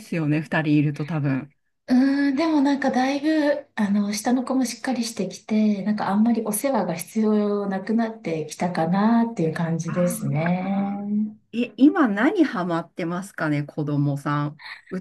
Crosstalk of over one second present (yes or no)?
yes